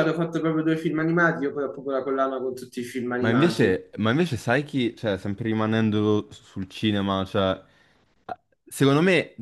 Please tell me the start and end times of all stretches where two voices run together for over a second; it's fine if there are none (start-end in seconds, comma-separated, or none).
none